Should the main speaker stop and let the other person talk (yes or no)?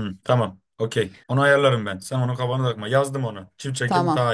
yes